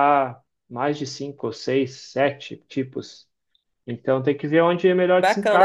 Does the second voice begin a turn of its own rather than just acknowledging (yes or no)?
yes